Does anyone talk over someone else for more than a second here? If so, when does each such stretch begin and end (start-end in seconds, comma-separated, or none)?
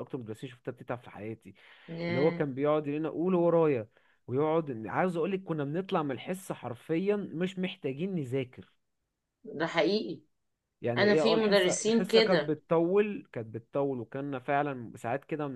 11.0-12.6